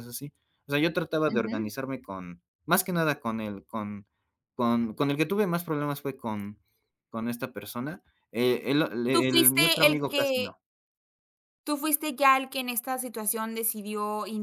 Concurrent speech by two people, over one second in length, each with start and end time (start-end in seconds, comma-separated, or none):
9.1-10.5